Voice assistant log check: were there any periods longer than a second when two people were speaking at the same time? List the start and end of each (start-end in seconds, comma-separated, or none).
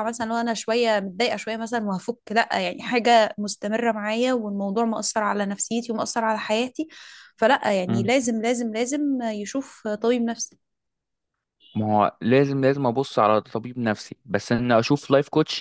none